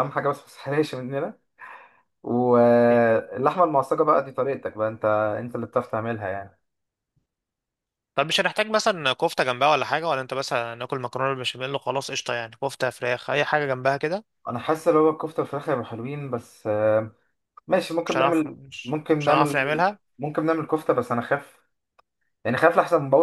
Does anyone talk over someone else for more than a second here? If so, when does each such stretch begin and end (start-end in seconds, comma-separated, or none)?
18.0-19.8